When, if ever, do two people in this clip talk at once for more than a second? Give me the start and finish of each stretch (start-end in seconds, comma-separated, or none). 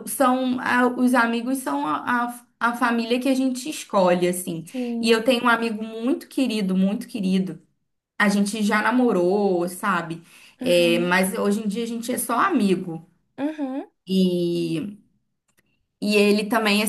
none